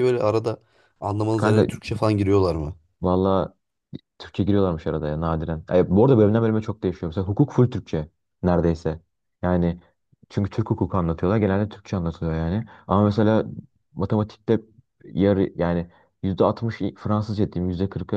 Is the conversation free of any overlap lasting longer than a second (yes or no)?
yes